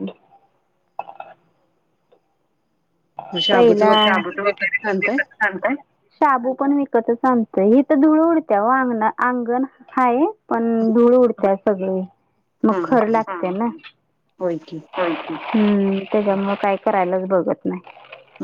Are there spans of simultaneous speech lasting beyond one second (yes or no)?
yes